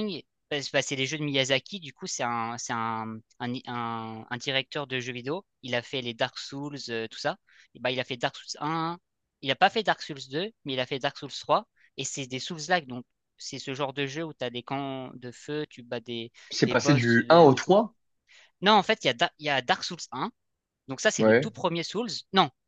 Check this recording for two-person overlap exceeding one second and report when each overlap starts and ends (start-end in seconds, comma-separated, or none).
16.5-17.8